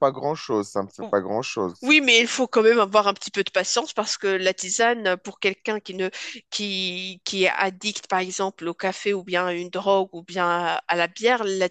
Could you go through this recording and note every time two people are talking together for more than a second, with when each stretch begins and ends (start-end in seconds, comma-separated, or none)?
none